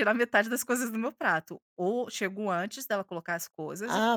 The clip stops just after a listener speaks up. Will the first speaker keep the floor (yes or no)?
no